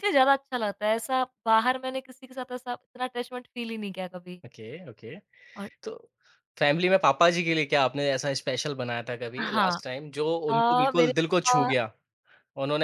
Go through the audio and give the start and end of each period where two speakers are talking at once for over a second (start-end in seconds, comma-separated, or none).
10.5-11.7